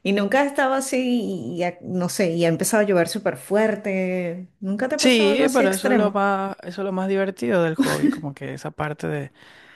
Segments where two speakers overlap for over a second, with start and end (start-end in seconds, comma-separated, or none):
5.0-6.3